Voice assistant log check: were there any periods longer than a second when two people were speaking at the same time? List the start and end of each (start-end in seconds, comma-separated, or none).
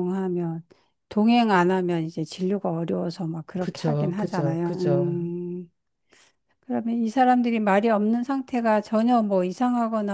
3.6-5.2